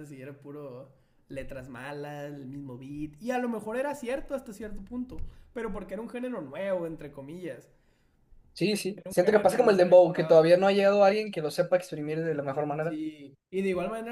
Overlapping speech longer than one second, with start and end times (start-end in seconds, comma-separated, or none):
9.0-10.5